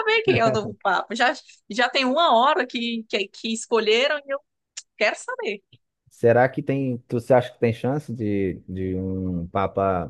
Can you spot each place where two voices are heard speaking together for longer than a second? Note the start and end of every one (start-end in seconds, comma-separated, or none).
none